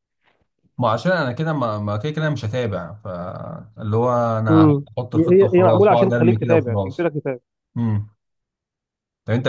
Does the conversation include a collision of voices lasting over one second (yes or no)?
yes